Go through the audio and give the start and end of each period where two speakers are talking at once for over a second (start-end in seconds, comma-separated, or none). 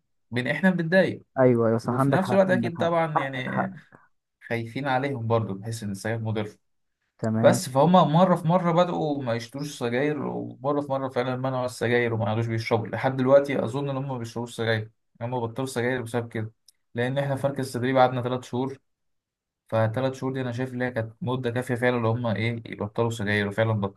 1.8-3.7